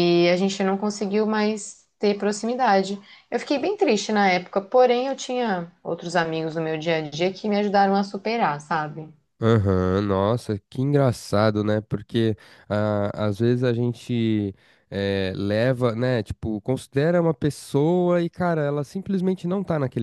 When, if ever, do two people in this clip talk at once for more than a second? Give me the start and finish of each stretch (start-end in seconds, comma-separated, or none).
none